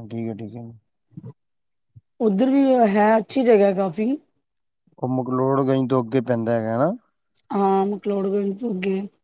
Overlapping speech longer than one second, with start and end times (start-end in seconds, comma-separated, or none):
none